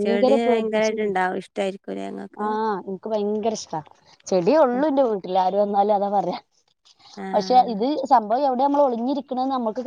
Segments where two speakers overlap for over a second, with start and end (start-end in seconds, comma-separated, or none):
none